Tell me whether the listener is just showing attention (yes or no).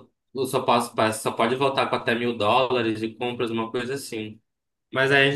yes